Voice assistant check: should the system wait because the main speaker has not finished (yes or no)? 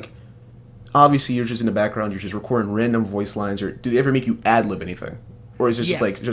no